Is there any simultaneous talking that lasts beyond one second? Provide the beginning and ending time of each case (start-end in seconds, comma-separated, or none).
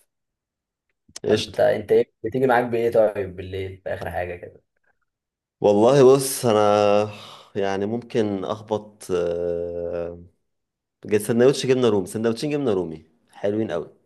none